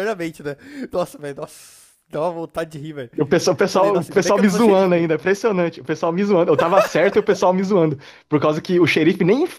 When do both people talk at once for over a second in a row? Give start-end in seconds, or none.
3.7-5.1